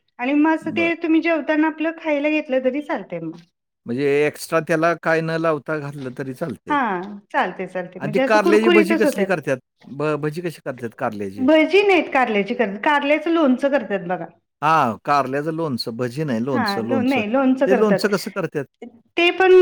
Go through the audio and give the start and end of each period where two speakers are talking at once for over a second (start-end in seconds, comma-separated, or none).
8.0-9.3, 16.5-18.0